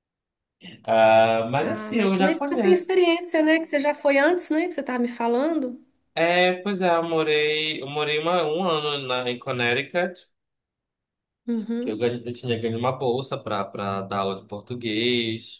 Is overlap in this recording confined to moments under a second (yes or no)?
no